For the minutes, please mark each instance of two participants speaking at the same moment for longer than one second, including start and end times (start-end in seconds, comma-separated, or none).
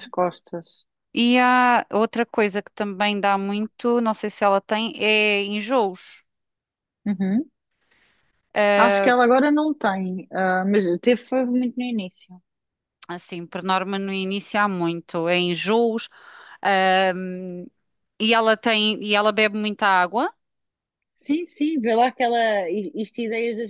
none